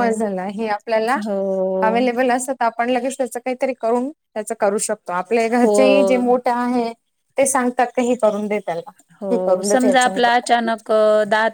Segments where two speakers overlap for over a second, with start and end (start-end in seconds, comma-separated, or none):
9.3-10.7